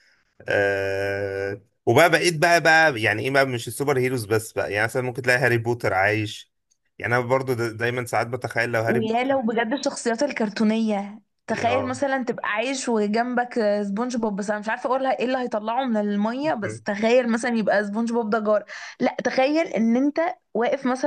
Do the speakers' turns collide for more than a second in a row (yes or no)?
no